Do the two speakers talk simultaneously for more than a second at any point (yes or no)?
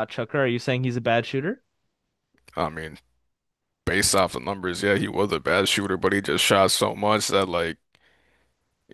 no